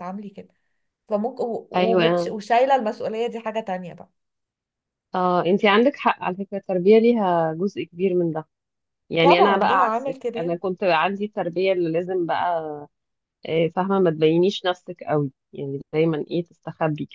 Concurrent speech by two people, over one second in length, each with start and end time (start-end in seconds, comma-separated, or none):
9.2-10.6